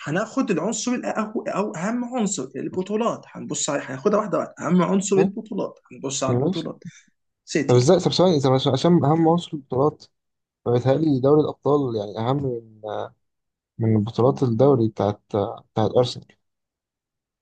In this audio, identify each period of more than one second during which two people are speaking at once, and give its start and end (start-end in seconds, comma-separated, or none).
none